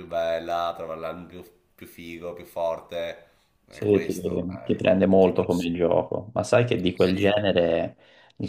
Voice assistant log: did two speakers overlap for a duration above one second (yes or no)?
yes